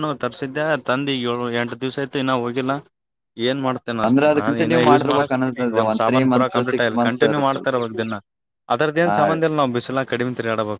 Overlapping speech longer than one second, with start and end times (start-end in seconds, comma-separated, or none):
4.1-7.7